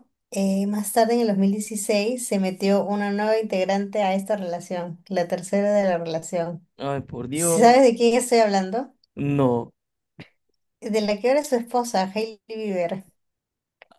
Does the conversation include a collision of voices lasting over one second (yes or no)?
no